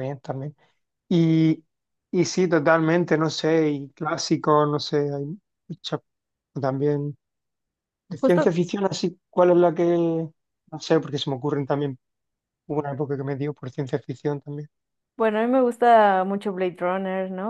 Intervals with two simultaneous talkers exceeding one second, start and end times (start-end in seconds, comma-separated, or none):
none